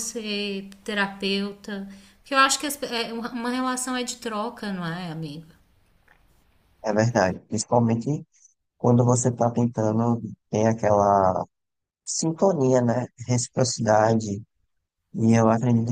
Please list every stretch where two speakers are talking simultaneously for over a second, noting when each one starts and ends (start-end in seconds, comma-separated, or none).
none